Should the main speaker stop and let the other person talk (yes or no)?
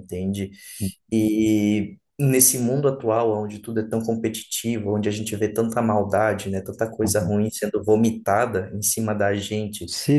no